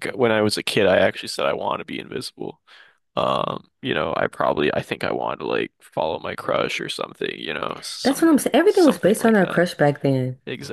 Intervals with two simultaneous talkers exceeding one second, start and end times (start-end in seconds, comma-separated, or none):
8.0-9.7